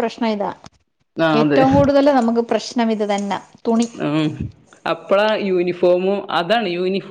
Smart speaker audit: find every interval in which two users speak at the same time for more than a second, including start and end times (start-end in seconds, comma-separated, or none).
none